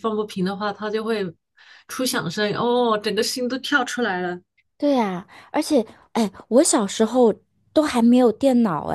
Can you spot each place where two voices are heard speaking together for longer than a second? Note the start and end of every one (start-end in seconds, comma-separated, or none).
none